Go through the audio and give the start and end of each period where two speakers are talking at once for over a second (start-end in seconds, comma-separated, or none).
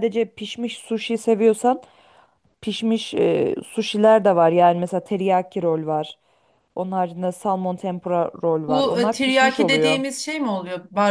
8.7-10.0